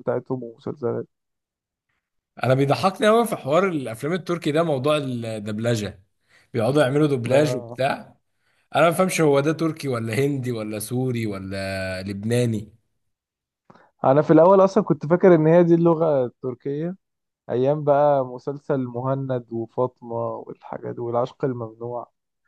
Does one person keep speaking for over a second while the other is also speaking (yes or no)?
no